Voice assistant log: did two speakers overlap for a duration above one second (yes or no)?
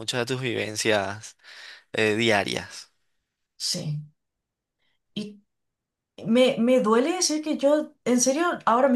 no